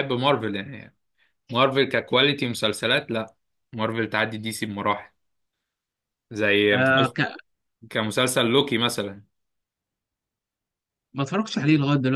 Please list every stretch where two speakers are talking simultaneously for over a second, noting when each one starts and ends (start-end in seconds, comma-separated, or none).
none